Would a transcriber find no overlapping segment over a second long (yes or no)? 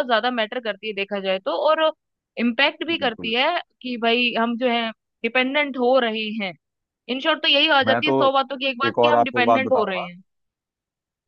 no